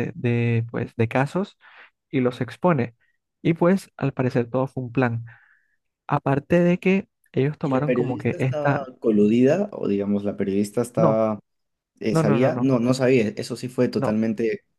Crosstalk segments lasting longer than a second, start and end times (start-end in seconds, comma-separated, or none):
7.6-8.9